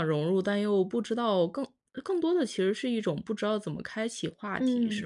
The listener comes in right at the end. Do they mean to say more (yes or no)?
yes